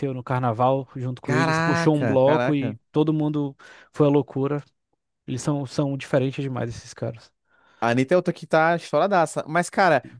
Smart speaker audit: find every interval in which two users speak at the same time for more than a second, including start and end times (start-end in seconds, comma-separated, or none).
1.2-2.8